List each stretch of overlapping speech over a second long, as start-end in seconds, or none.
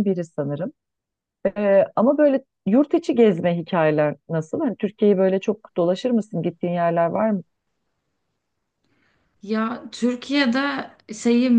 none